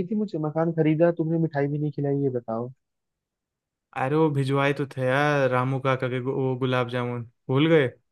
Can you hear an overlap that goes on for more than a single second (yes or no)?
no